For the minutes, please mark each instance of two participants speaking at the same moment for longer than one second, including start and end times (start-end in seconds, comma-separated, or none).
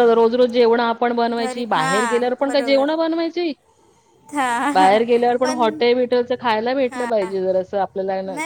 1.4-2.9